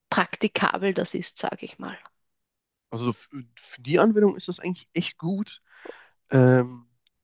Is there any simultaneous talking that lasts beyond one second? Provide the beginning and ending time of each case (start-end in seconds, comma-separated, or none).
none